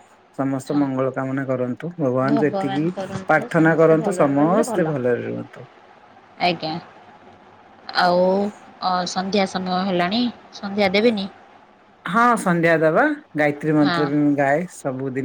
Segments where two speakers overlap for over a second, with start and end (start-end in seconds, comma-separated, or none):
2.3-4.8